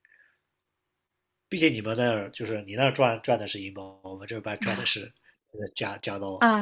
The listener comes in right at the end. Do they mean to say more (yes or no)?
yes